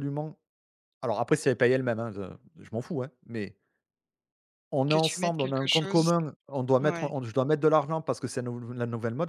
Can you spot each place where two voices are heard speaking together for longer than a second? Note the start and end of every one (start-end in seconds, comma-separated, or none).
4.9-6.1